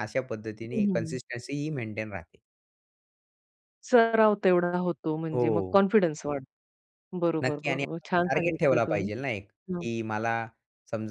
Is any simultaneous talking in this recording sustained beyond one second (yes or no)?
yes